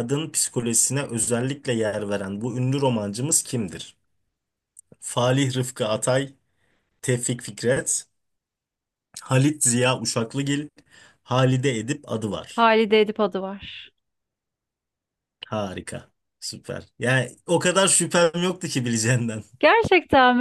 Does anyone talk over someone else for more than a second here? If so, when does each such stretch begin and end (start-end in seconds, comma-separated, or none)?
none